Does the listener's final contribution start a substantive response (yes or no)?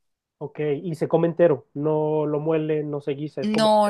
yes